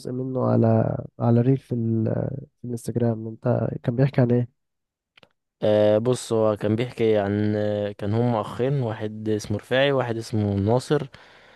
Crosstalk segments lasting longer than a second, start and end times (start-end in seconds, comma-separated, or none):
none